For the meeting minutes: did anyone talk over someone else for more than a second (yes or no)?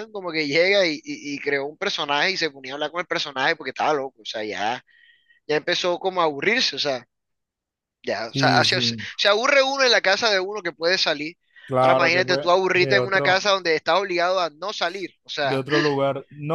yes